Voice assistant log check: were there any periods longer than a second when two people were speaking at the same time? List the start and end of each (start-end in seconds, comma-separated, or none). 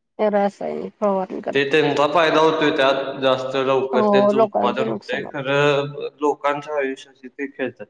3.9-5.3